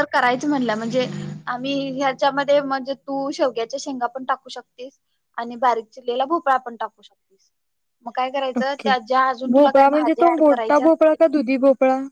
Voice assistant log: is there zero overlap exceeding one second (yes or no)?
no